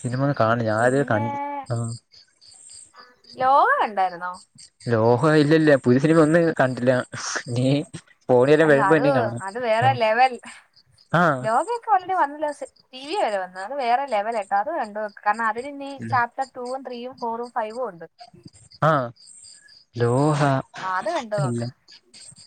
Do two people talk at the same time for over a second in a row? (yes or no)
no